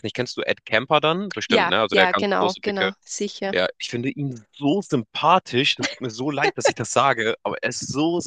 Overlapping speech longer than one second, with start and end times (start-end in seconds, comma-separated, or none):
1.5-2.9